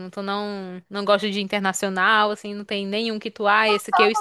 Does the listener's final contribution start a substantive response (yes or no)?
yes